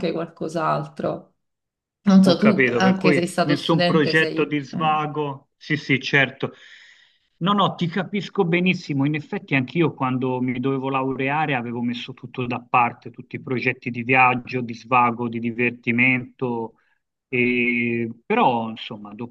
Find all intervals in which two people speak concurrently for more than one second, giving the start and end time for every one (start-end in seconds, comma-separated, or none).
2.2-4.9